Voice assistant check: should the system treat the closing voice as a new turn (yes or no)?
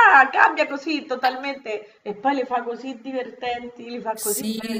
yes